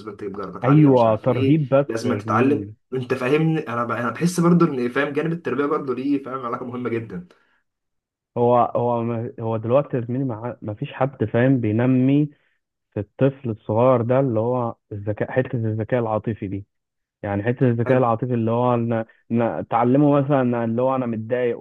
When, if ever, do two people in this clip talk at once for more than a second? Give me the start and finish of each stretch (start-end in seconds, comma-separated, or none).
0.6-2.7